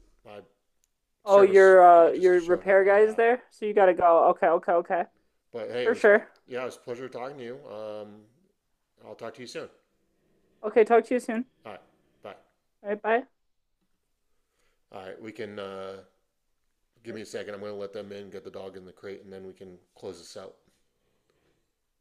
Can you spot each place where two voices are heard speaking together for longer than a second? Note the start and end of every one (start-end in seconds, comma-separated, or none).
1.3-3.2